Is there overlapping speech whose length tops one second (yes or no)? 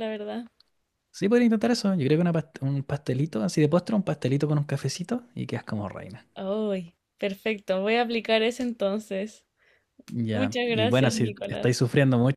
yes